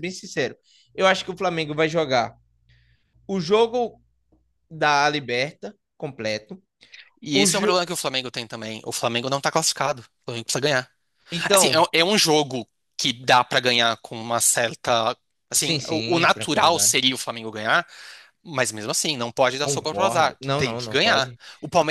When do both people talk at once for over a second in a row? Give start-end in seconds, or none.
15.5-16.9, 19.6-21.4